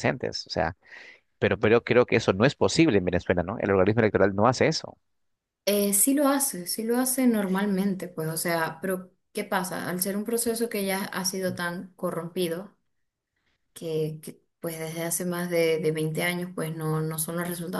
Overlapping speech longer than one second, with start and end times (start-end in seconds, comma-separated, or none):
none